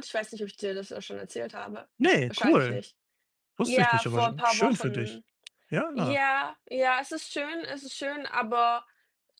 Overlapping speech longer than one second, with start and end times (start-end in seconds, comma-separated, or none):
3.6-5.2